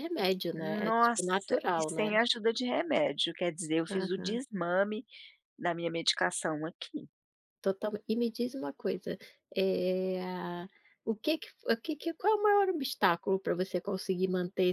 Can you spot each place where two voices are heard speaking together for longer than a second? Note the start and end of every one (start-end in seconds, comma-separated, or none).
0.8-2.2